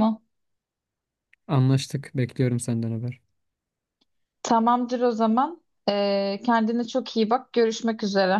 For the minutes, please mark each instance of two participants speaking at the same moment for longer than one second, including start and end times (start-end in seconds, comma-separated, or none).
none